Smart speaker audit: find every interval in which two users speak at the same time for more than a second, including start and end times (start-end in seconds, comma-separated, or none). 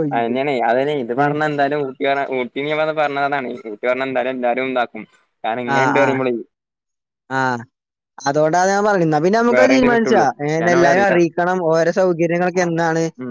none